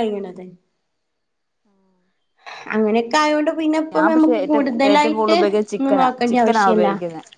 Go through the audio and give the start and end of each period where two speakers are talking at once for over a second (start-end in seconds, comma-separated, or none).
3.9-6.9